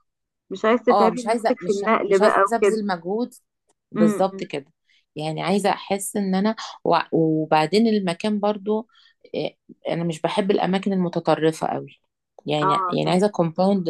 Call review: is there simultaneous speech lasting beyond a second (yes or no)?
yes